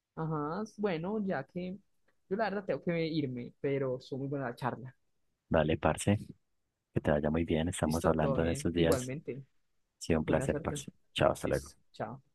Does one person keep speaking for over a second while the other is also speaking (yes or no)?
yes